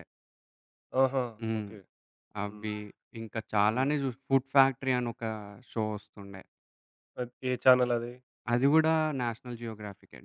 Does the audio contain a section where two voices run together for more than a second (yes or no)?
no